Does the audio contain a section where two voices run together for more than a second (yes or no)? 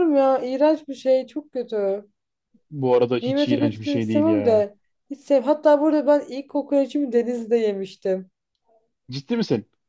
yes